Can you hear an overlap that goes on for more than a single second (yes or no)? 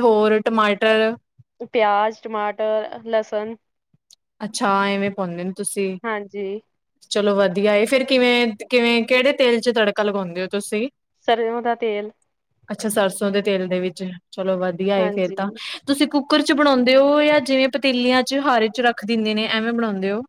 no